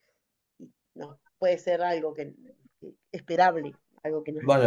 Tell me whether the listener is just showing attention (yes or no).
no